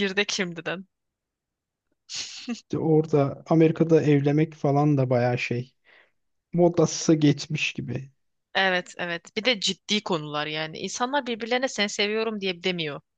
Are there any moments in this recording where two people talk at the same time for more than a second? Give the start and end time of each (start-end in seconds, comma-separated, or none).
none